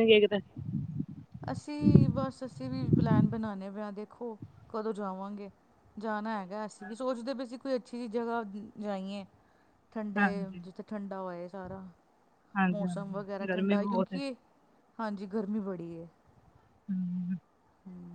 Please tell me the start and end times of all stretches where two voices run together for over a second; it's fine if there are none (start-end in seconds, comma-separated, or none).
12.7-14.2